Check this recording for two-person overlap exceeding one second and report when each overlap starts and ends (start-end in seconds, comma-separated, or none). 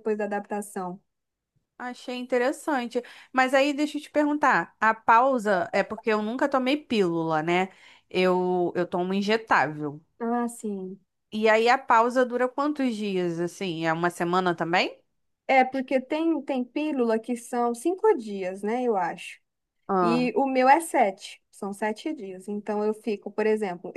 none